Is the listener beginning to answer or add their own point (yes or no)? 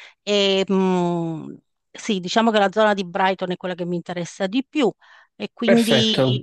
no